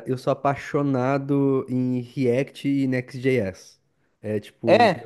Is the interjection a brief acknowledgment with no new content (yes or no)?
yes